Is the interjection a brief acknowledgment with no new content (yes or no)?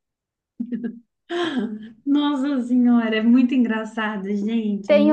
no